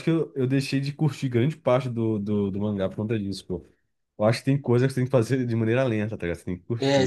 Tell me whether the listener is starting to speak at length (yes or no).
yes